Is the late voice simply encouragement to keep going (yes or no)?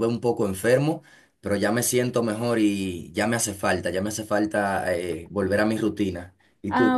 no